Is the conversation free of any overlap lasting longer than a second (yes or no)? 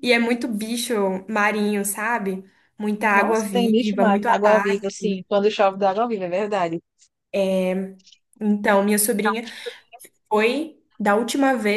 no